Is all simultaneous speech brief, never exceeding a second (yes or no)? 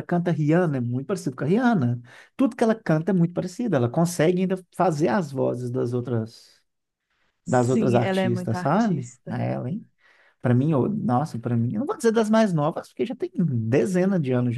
no